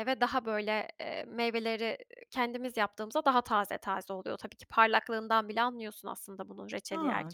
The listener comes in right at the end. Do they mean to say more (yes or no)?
yes